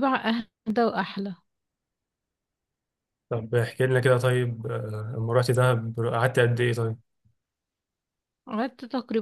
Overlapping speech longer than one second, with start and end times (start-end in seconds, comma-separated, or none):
none